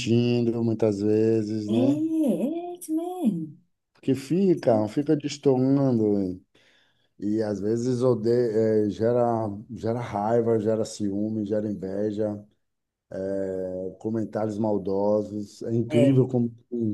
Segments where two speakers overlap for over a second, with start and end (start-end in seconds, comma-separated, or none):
none